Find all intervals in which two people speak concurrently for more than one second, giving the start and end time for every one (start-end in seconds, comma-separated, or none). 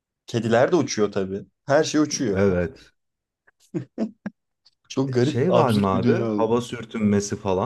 5.1-6.5